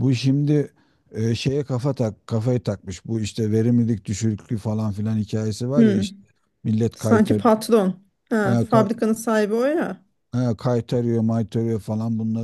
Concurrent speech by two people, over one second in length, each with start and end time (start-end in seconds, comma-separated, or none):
none